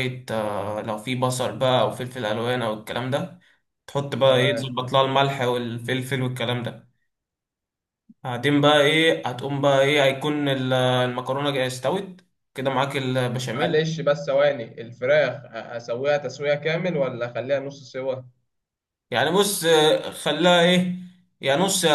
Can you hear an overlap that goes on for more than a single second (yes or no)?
no